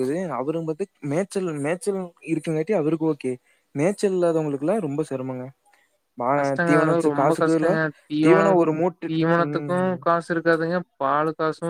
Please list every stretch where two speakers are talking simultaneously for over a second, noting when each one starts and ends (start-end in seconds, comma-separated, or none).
none